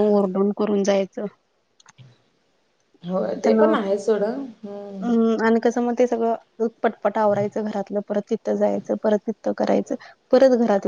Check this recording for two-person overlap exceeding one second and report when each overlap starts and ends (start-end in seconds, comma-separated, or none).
none